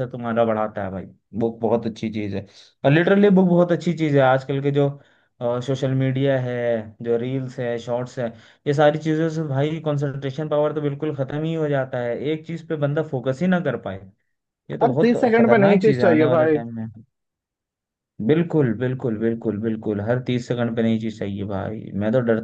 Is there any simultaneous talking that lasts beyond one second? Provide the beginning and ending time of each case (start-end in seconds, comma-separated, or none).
14.8-16.6